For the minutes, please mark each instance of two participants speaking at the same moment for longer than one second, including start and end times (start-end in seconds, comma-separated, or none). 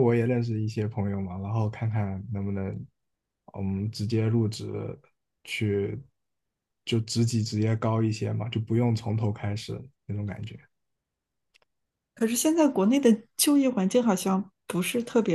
none